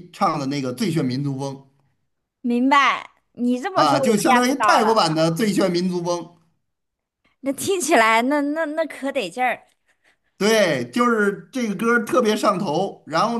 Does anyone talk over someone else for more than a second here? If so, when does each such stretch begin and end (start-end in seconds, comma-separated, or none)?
3.8-5.0